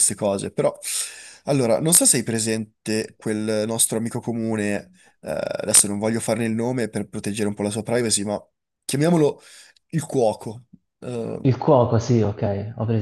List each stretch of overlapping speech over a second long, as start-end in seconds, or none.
none